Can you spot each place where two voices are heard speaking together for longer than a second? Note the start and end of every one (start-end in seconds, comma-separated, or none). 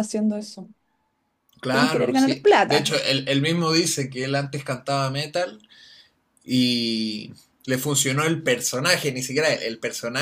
1.7-3.0